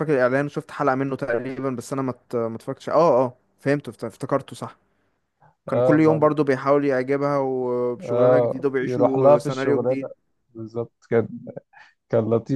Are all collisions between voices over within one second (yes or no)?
no